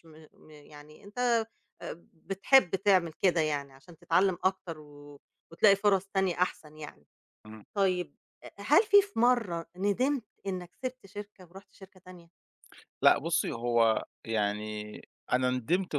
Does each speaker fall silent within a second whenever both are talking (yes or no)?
yes